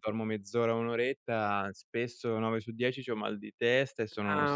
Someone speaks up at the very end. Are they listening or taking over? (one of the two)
taking over